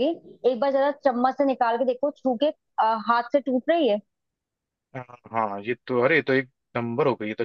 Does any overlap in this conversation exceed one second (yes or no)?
no